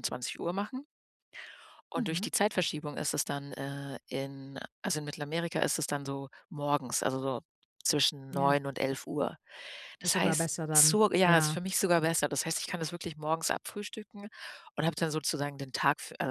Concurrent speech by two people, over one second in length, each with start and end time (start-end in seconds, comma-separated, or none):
10.0-11.6